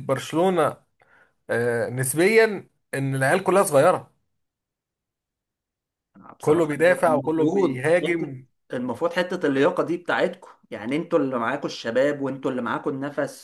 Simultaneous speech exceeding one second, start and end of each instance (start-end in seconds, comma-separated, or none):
6.4-8.3